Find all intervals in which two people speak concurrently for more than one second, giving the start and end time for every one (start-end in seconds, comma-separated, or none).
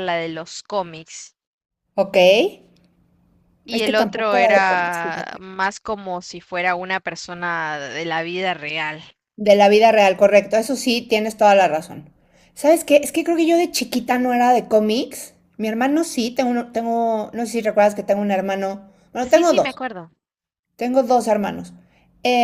3.7-5.5